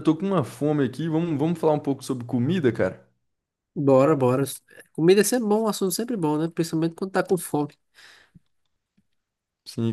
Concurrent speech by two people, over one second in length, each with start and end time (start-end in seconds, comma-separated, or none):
none